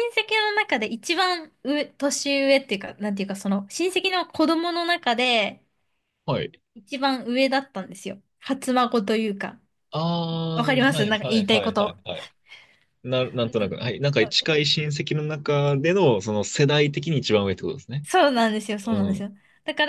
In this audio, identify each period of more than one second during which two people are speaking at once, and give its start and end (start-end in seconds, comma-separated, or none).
10.6-12.0